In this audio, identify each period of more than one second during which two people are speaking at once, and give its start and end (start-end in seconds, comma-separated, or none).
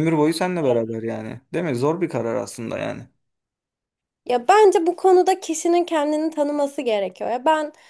none